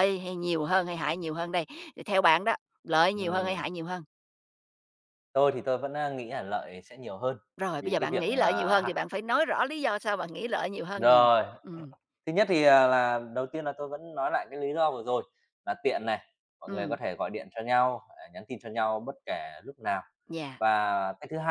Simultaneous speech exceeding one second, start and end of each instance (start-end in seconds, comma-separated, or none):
7.6-8.9